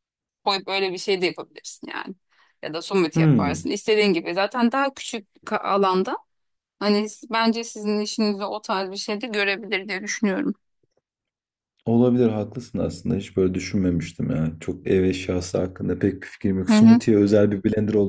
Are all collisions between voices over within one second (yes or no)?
yes